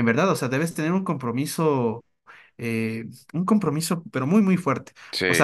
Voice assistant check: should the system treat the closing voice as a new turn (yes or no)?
no